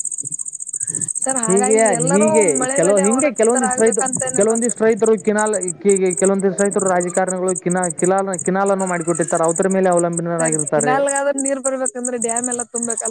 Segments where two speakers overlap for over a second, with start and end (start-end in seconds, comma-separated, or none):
3.1-4.8